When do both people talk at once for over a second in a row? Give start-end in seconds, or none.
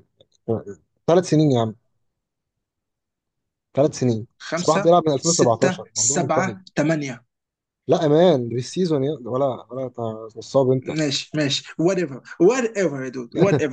4.4-6.6